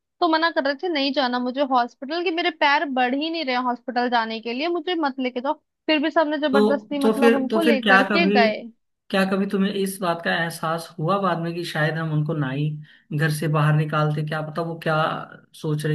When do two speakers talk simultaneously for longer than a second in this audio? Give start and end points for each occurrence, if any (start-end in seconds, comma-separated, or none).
6.5-8.4